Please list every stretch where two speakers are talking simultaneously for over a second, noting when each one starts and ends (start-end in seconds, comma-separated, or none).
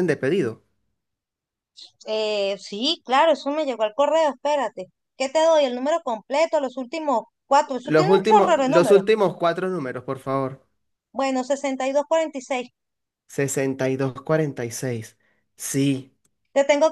7.8-9.0